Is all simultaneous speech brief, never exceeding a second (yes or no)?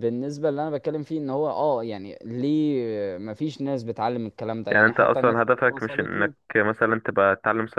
no